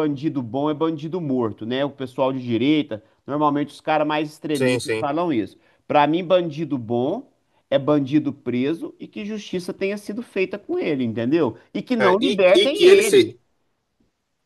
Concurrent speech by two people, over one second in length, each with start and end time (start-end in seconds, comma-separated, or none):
12.0-13.4